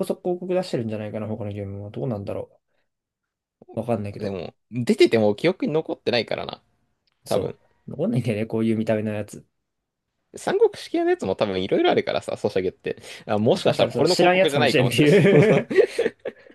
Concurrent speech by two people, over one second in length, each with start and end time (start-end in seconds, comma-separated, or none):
13.5-15.7